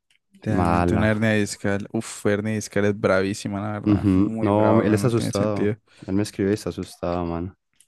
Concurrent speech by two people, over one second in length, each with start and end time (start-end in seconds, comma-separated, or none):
3.8-5.8